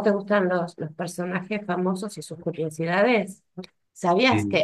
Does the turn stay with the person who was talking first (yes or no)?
yes